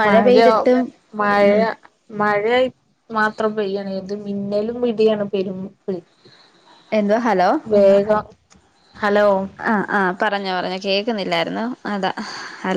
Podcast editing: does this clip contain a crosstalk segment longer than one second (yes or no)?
no